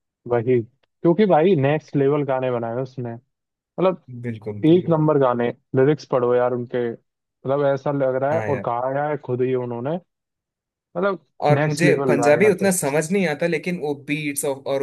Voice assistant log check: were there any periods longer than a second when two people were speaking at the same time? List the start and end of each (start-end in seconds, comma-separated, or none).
11.6-12.9